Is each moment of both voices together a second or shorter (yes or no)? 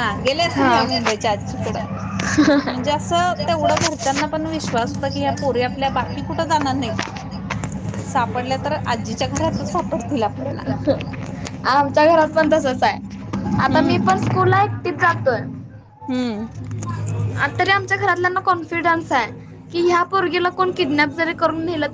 no